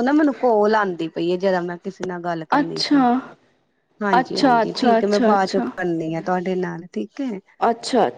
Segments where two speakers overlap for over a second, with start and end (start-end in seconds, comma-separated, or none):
4.2-5.7